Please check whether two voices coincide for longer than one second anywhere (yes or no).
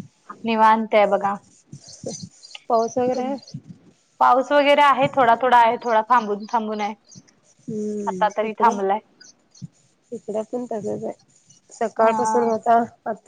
no